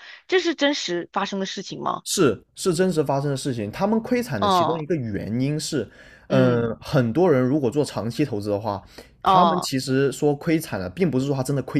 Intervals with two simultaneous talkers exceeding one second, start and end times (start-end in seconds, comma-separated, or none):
none